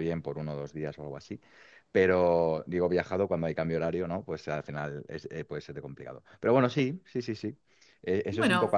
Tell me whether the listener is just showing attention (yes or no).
yes